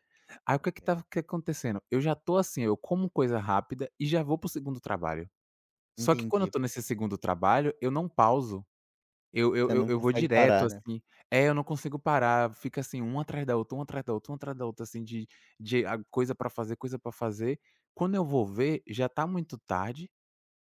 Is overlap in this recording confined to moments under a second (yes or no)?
no